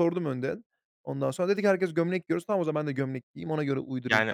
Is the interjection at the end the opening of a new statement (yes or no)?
yes